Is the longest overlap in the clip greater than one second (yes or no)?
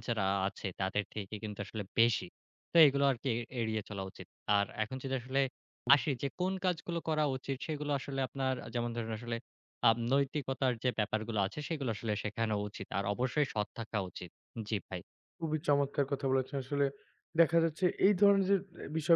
no